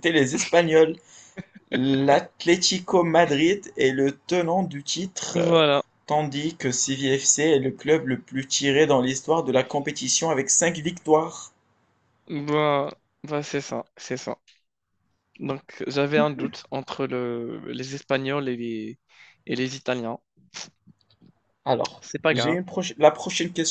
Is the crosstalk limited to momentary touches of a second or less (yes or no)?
yes